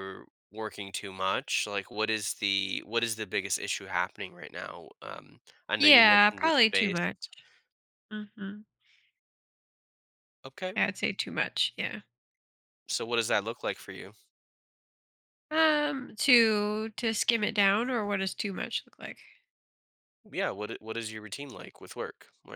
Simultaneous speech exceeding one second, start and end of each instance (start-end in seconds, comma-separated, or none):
5.8-7.1